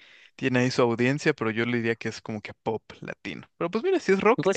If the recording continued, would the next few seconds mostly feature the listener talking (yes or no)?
yes